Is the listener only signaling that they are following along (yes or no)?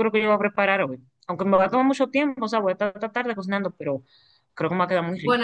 no